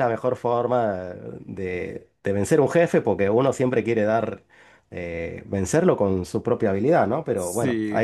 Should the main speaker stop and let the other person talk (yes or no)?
no